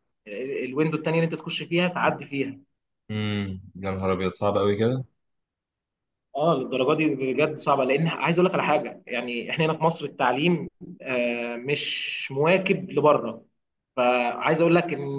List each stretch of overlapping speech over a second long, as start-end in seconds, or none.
none